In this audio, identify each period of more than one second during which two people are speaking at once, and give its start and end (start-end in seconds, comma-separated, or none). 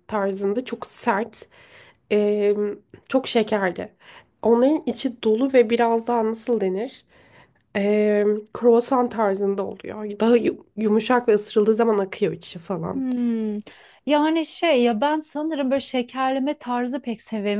none